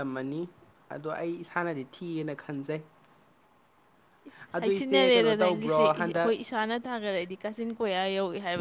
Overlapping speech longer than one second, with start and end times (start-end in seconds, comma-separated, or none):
4.6-6.3